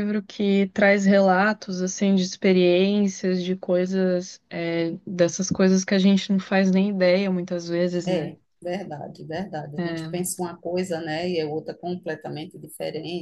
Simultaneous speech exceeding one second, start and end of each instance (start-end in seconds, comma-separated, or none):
none